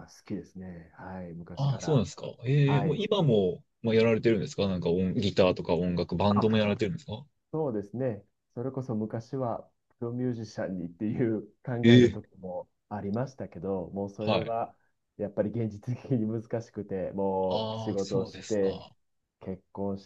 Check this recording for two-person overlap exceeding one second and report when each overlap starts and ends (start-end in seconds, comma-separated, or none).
17.5-18.8